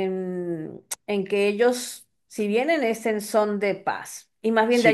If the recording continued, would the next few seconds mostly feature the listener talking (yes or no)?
yes